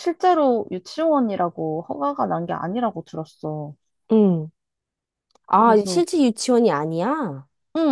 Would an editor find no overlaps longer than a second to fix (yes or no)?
yes